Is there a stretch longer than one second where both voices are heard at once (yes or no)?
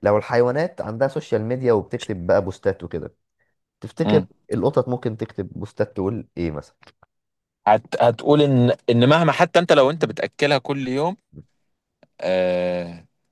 no